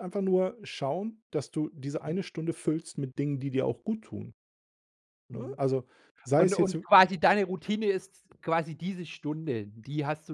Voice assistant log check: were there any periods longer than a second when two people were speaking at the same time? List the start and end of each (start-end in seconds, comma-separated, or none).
none